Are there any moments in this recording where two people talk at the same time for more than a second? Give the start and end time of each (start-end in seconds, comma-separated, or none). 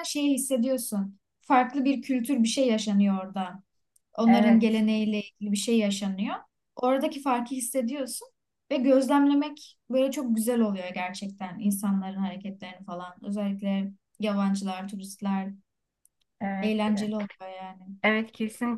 none